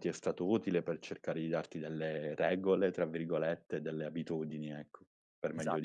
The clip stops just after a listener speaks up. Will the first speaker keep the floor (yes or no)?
no